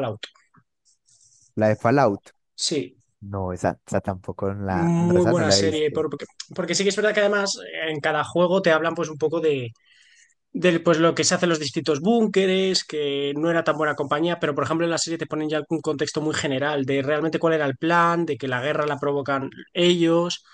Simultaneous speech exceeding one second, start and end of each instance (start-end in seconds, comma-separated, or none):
4.7-6.0